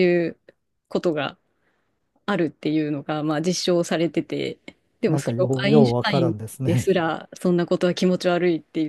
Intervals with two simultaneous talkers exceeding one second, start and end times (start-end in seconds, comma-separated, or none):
5.1-6.9